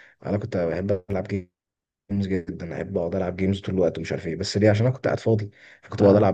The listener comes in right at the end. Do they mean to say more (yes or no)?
no